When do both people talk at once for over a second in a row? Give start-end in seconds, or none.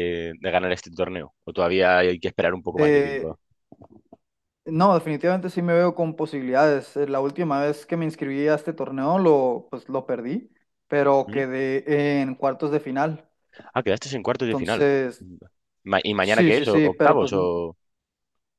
16.2-17.5